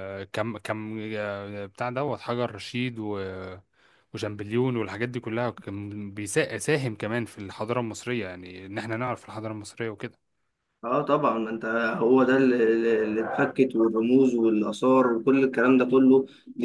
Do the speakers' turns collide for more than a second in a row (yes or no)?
no